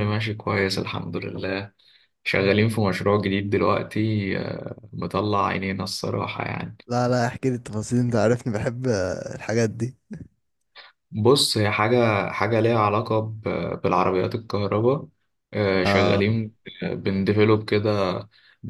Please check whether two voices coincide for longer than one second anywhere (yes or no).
no